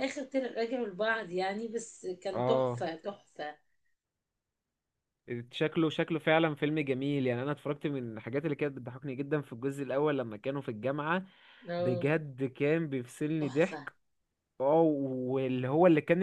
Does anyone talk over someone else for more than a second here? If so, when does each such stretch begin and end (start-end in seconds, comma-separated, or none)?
none